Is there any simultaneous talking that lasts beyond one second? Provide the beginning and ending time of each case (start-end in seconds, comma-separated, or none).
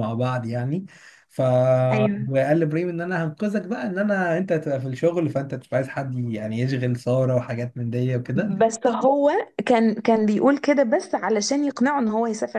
none